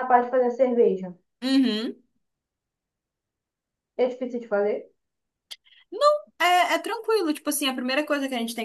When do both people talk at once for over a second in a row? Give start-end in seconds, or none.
none